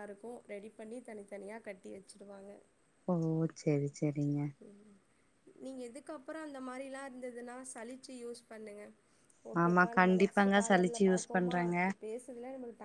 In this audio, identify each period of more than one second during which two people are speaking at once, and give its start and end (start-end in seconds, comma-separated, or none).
9.6-11.8